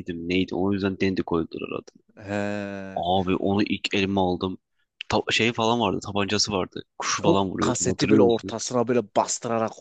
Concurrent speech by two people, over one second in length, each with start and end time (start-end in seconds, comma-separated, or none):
7.2-8.6